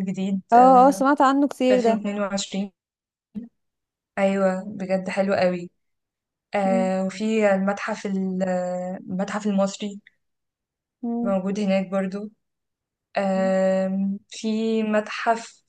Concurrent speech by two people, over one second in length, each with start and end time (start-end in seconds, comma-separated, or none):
none